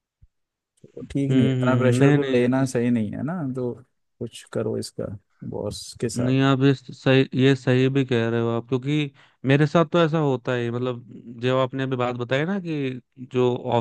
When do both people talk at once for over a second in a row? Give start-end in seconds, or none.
1.3-2.6